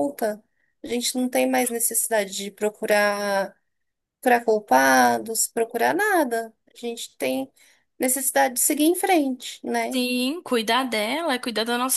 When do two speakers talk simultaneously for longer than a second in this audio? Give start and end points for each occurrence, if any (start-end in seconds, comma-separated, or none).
none